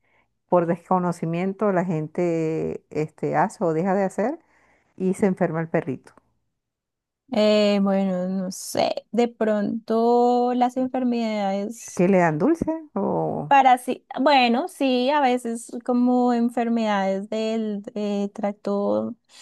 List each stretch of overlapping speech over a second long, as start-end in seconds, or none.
none